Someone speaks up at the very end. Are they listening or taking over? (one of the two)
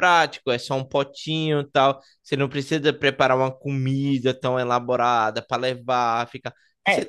listening